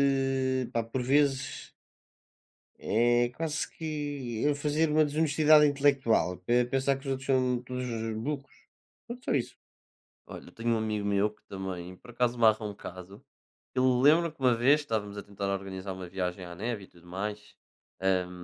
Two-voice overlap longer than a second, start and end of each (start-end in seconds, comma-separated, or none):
none